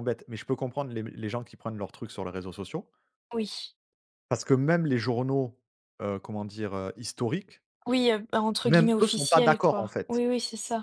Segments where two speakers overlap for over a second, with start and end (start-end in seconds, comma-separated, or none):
8.6-10.2